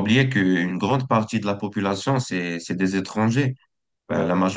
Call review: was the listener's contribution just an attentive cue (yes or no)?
yes